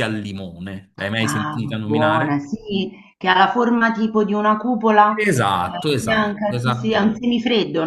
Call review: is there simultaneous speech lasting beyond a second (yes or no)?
yes